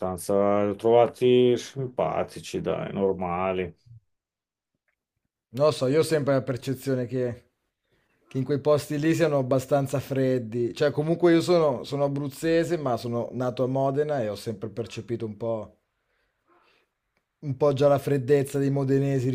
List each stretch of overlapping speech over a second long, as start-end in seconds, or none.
none